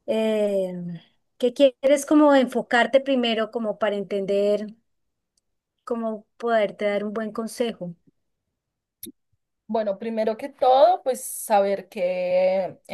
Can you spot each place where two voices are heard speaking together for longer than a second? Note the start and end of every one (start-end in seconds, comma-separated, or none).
none